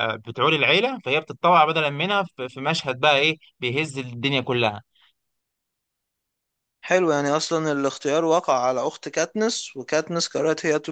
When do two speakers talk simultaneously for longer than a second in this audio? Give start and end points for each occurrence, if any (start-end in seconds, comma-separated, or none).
none